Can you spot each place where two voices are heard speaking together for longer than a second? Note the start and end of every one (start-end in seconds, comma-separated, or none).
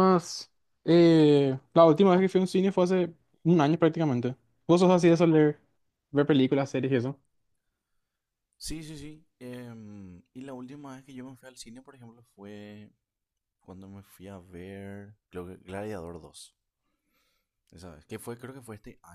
none